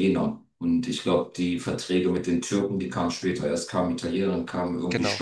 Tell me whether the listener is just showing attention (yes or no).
yes